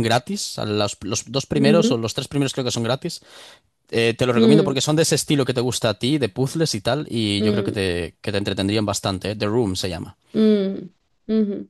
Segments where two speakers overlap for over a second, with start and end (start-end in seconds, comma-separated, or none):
none